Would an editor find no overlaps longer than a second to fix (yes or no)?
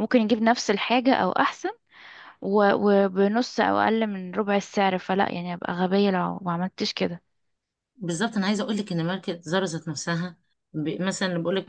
yes